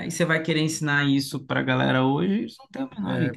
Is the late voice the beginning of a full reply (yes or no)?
yes